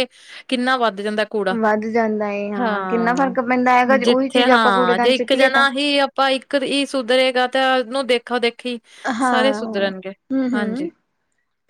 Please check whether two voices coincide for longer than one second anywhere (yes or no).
yes